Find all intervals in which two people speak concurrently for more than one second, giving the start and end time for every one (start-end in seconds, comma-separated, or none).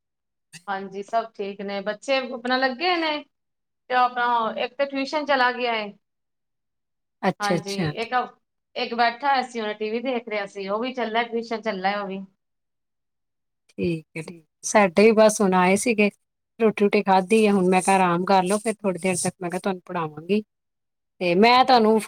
none